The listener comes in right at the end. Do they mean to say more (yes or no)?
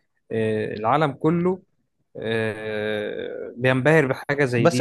yes